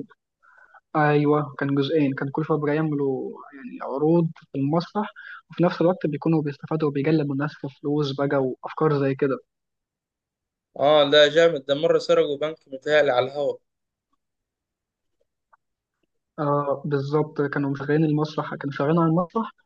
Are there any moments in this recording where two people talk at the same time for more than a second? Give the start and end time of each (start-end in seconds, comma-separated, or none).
none